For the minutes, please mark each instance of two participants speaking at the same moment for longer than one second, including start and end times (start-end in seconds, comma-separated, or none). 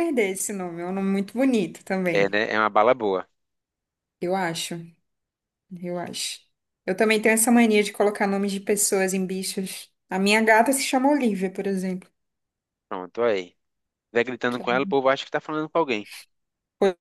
none